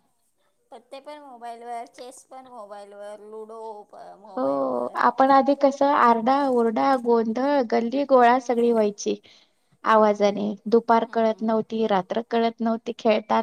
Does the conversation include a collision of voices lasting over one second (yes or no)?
no